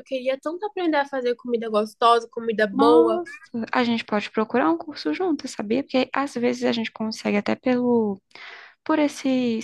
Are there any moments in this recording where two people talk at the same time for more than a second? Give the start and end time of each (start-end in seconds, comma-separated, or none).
none